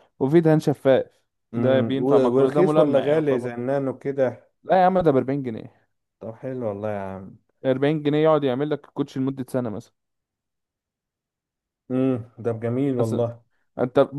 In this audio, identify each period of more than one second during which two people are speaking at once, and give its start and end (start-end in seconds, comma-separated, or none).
1.5-3.5